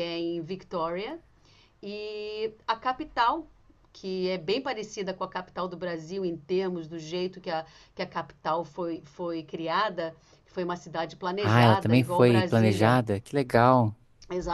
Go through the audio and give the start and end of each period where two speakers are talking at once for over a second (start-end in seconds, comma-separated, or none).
11.4-13.0